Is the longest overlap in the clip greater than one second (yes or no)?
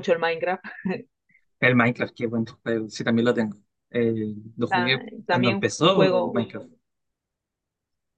yes